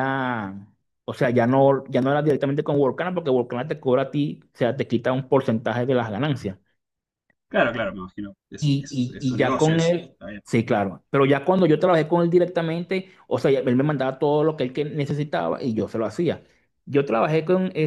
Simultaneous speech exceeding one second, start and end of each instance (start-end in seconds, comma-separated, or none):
8.6-10.4